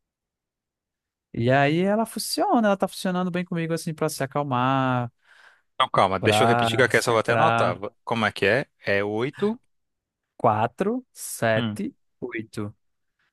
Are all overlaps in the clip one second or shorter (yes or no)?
no